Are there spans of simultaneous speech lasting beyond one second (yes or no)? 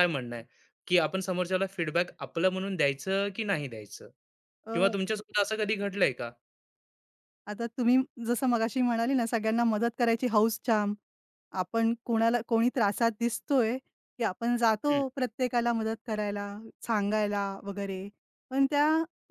no